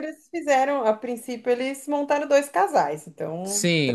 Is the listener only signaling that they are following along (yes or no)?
no